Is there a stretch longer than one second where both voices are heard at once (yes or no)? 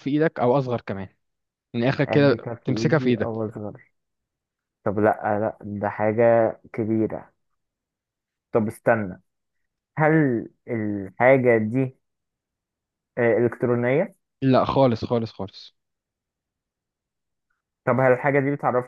yes